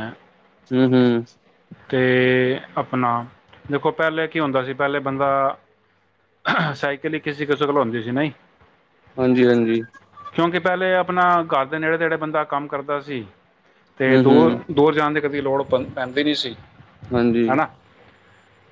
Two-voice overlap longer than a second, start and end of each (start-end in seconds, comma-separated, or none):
none